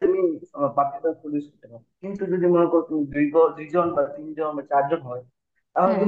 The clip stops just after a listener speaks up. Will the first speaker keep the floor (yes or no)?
yes